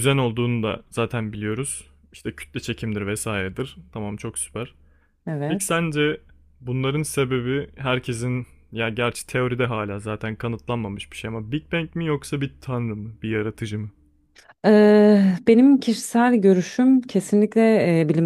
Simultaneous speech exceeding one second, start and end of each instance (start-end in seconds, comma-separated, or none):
none